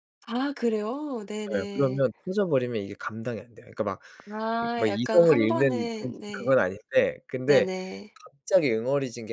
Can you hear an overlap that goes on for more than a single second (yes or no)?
yes